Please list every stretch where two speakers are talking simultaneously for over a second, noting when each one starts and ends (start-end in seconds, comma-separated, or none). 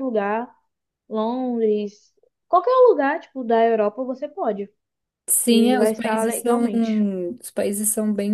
5.5-6.7